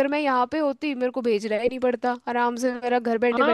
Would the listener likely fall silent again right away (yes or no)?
no